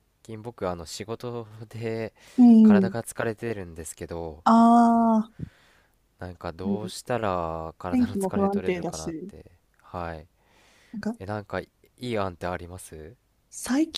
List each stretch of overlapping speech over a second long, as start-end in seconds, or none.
7.9-9.3